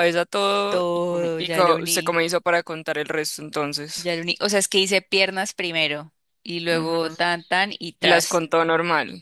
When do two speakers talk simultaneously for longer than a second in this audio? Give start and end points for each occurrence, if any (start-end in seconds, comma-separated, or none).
0.7-2.2